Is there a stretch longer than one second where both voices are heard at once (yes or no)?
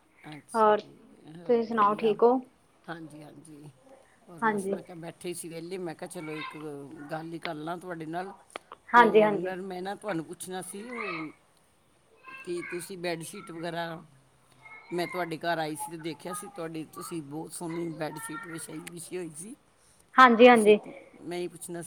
no